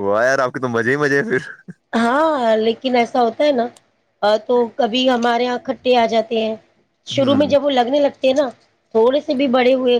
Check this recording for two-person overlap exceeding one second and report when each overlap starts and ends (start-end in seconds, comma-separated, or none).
none